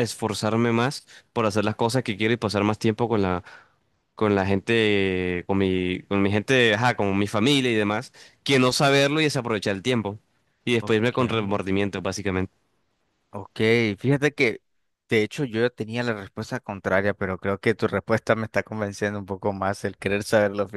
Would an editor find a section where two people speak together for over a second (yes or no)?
no